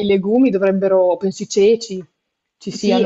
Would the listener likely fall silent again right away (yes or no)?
no